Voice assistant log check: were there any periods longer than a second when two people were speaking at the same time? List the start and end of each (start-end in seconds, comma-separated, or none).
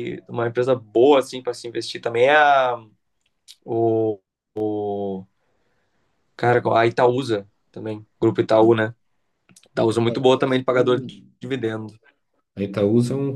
9.9-11.3